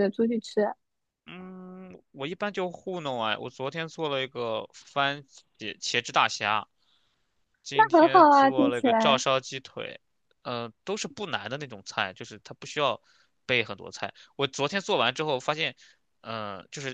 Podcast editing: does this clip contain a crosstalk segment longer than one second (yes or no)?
yes